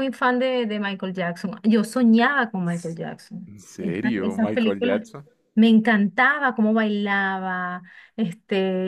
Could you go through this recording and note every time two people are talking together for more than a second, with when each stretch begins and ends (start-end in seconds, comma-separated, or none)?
3.5-5.0